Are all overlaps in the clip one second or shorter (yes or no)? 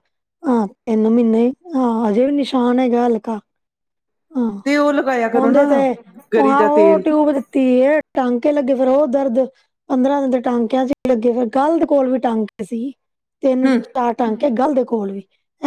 yes